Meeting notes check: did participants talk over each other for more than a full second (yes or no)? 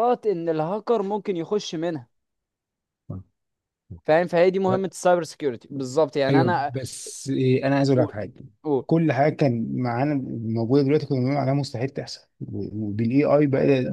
no